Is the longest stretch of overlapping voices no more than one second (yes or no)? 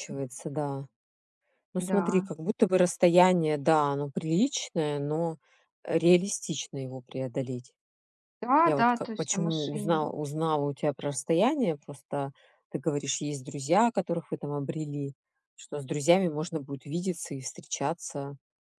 no